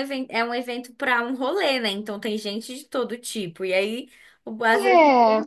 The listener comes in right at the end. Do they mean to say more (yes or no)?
no